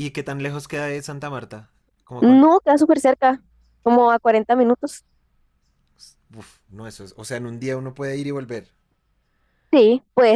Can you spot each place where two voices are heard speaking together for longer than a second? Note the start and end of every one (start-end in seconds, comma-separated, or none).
none